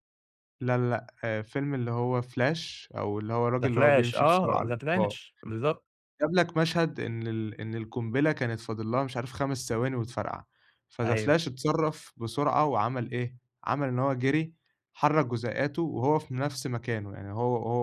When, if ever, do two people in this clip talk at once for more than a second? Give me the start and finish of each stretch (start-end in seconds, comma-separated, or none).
3.6-5.2